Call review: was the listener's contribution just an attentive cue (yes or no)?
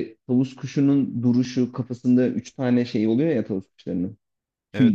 no